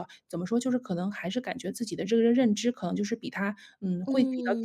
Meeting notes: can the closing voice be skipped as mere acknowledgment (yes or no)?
no